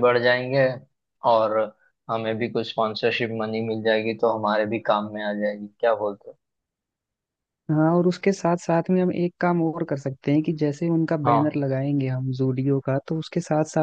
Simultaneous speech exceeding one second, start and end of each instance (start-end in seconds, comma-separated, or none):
none